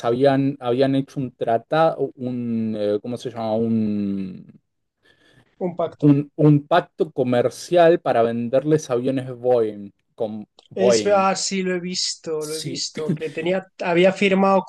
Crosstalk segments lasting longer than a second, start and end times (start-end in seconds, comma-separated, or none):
none